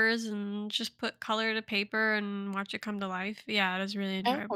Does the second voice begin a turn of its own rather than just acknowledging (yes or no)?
yes